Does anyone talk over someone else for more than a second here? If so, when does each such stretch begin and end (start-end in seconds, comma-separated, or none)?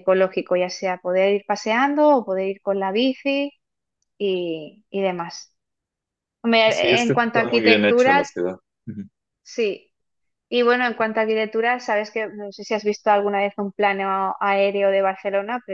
6.7-8.3